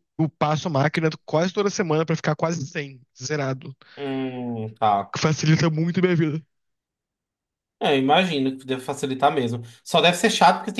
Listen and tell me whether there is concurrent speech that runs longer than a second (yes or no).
no